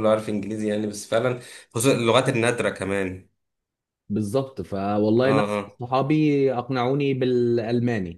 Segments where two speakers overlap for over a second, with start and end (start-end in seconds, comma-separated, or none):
none